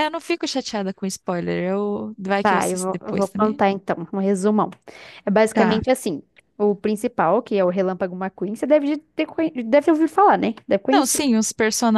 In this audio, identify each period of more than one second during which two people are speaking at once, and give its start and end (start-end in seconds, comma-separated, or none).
2.4-3.6